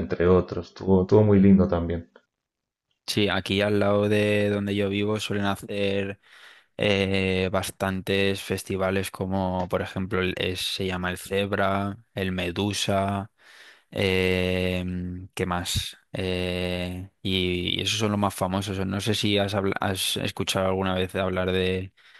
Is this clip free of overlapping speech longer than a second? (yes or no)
yes